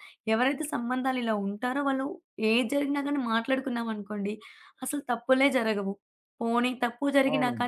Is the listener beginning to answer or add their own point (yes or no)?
no